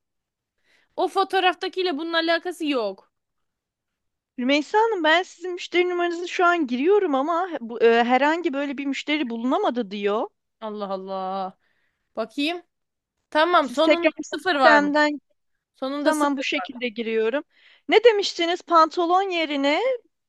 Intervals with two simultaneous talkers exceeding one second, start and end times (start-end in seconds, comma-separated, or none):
13.6-14.9